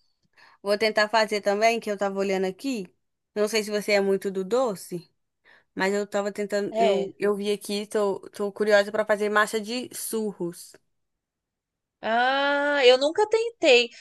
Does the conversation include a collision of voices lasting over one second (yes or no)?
no